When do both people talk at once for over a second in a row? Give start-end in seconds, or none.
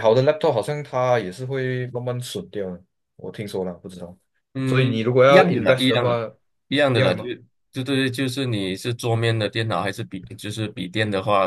4.7-6.2